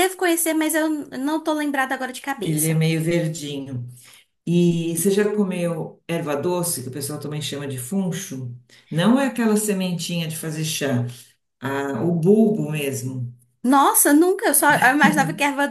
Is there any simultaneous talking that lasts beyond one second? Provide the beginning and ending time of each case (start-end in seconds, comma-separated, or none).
none